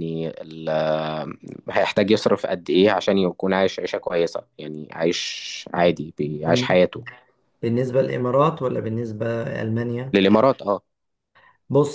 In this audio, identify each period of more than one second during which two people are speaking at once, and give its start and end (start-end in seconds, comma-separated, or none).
none